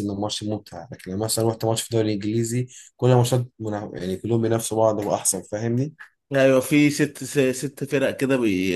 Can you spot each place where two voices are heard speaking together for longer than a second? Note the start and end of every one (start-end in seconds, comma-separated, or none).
none